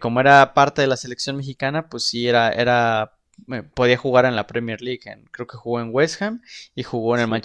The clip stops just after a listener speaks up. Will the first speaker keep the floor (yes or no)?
no